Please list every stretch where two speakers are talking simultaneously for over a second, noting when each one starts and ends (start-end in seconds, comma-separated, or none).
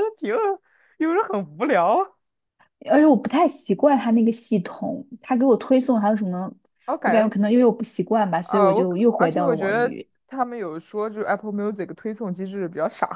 8.4-10.1